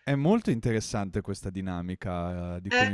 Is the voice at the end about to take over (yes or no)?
no